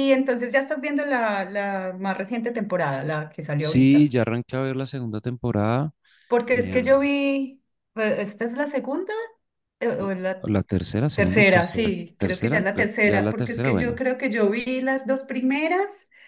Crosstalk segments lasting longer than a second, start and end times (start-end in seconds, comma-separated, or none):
11.2-14.0